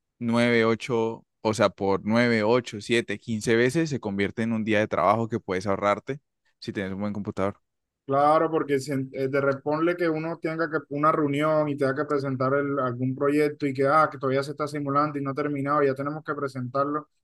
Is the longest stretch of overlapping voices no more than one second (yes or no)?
yes